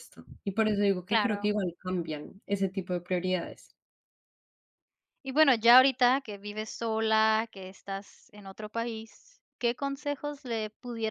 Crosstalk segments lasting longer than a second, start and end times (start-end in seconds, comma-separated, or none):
none